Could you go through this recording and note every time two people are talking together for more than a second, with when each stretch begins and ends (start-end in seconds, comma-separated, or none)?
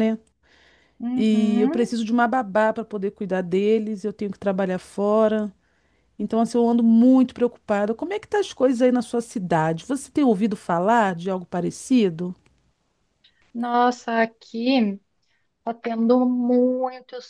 none